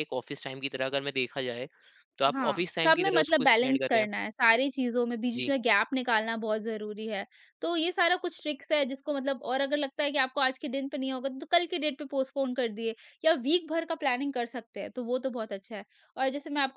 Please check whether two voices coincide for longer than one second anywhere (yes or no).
yes